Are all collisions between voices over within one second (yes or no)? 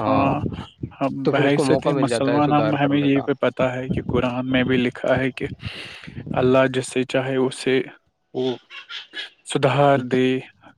no